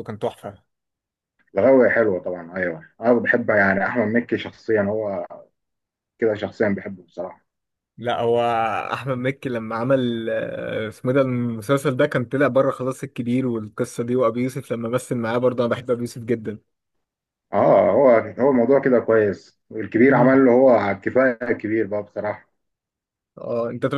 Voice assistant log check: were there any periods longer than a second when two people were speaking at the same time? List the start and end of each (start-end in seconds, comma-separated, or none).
none